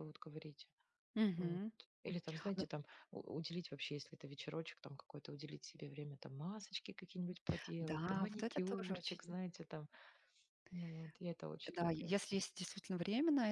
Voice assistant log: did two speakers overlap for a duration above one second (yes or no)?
yes